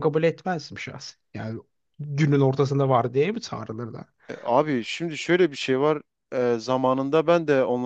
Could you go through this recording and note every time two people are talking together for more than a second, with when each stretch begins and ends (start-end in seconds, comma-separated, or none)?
none